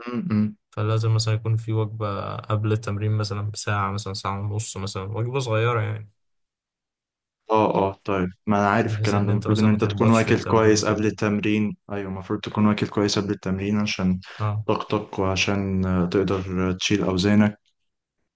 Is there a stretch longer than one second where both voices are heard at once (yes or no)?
yes